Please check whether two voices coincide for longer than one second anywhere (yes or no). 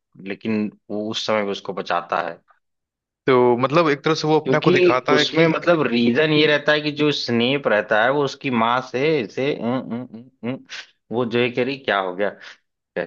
yes